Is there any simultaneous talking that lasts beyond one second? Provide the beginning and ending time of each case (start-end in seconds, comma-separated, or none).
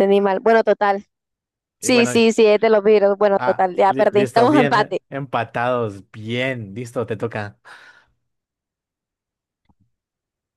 3.4-5.0